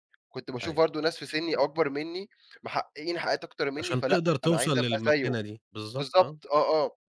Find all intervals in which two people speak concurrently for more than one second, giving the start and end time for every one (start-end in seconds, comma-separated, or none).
3.8-5.3